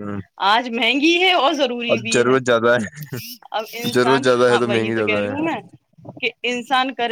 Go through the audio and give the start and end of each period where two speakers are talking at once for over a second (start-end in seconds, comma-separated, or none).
3.7-5.3